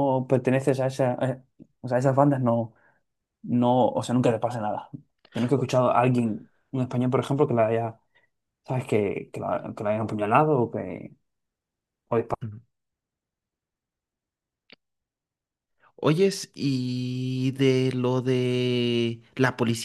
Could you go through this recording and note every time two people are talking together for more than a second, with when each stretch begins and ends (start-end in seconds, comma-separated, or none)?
none